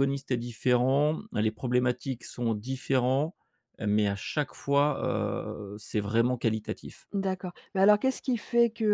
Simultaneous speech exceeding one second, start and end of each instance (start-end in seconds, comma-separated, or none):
none